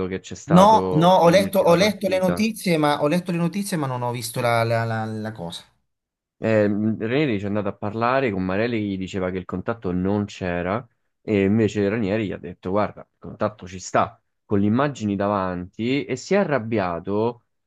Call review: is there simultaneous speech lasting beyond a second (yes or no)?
yes